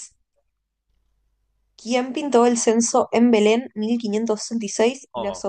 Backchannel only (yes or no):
yes